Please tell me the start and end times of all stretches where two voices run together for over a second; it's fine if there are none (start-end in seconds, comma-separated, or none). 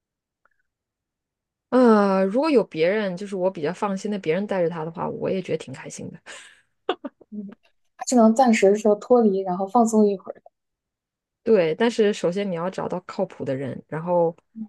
none